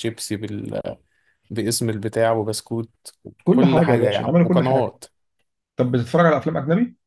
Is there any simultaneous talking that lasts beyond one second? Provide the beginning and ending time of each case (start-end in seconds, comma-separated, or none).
3.5-4.9